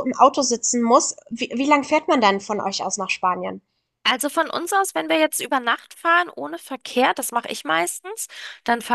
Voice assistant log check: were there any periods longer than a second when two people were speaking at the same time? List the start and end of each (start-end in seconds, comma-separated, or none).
none